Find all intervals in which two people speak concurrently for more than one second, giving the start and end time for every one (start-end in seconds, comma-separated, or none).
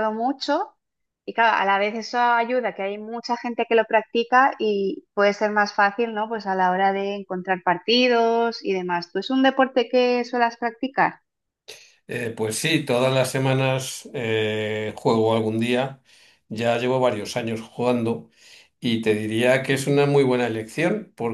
none